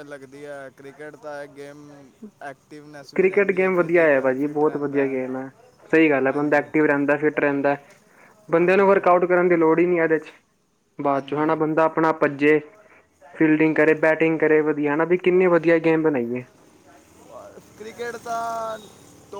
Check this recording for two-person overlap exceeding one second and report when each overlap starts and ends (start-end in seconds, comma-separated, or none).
3.1-5.0